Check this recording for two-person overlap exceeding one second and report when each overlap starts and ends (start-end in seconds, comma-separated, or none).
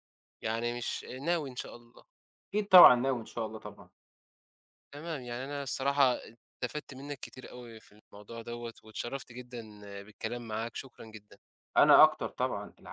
none